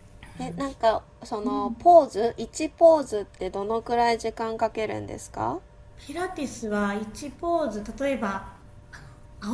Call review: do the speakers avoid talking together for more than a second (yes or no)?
yes